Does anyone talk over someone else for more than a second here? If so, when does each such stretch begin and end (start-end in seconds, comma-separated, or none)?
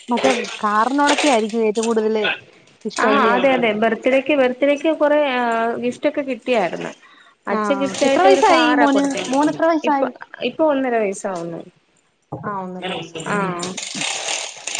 7.6-10.1